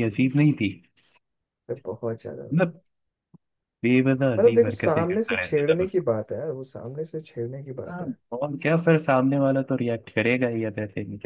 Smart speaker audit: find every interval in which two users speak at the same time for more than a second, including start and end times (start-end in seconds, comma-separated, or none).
4.4-5.9